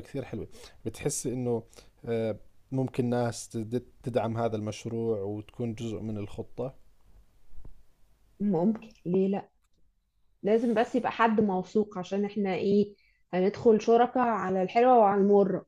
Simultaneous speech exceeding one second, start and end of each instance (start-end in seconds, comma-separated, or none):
none